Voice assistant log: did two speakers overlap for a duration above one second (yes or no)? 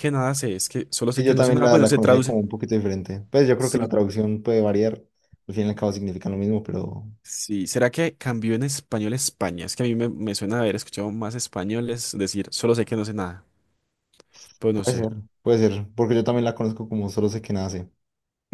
yes